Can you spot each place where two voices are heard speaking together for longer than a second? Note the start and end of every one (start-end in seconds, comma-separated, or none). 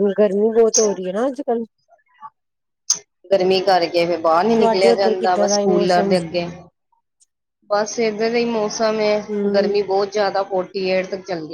4.5-6.1